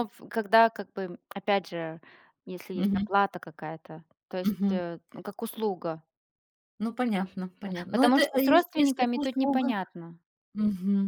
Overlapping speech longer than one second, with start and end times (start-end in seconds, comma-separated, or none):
7.6-9.7